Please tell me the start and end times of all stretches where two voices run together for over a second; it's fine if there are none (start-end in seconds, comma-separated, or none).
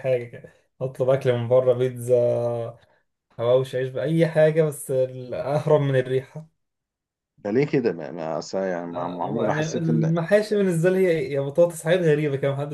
8.9-10.1